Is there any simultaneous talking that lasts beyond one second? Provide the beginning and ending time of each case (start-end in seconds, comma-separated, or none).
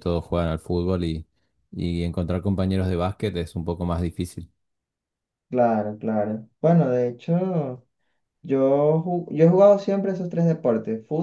none